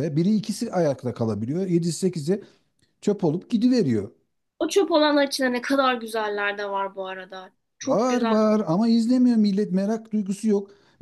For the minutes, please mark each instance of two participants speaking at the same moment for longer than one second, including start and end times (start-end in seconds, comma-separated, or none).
none